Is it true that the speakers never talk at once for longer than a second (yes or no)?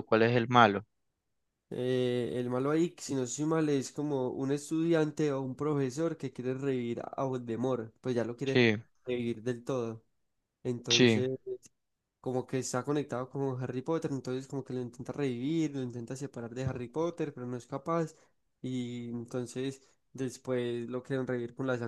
yes